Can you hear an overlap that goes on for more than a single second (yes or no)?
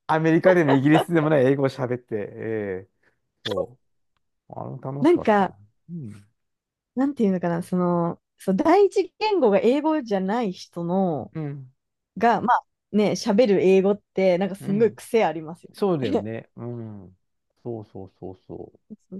no